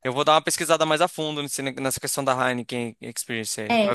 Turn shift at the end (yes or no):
yes